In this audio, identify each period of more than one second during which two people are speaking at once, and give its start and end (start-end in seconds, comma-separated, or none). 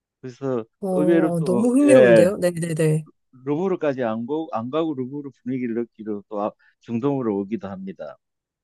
0.8-2.3